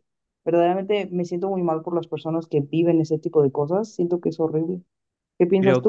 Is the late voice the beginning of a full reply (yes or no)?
yes